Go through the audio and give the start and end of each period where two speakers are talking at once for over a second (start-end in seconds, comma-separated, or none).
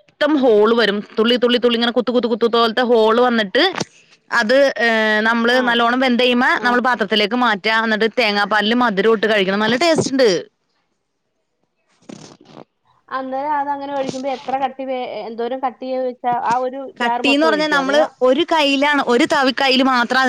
none